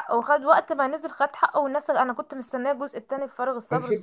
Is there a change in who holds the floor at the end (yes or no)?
yes